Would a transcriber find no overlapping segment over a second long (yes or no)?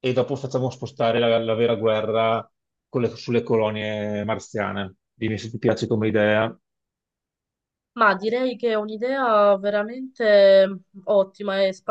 yes